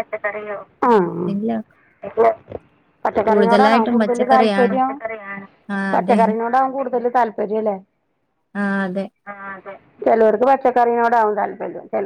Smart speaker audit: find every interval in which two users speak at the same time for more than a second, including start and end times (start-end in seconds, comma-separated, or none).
3.3-4.8